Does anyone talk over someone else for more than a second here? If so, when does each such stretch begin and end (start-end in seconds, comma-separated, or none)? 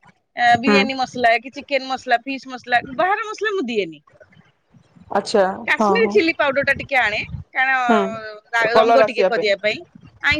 7.9-9.3